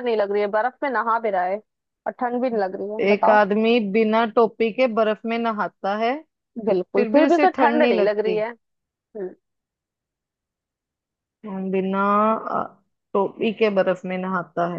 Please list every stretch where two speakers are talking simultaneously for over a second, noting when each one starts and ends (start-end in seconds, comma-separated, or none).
7.0-8.4